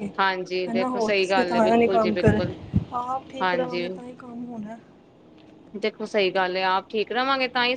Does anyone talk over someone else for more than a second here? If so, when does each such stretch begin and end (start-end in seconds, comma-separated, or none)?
0.7-2.4